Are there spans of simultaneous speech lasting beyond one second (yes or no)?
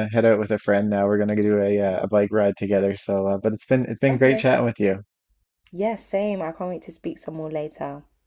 no